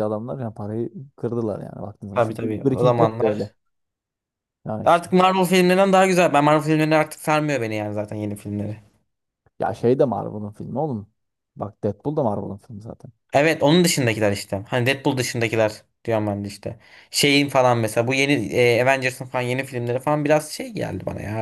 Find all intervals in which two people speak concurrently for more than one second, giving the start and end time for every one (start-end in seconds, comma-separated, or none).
2.1-3.5